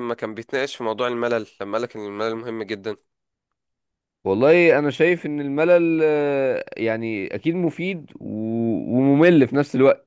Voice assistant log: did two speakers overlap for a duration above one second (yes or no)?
no